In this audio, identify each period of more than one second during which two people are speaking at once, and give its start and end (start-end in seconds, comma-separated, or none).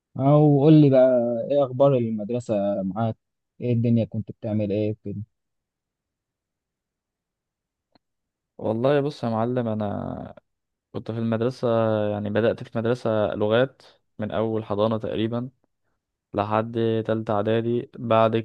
none